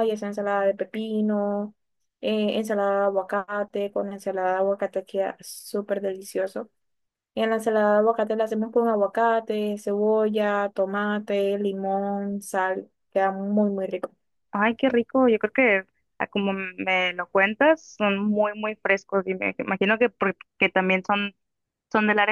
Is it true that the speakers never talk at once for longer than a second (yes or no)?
yes